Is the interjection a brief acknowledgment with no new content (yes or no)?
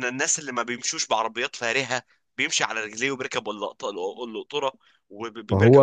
no